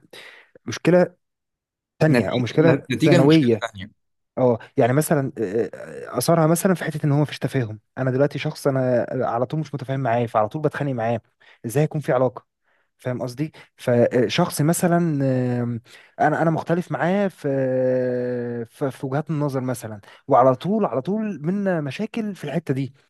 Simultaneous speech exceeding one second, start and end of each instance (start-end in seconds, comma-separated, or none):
2.1-3.6